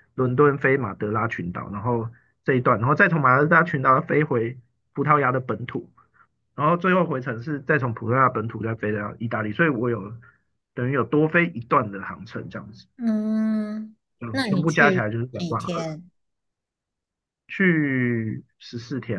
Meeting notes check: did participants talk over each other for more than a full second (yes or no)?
yes